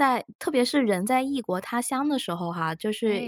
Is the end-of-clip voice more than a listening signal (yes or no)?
no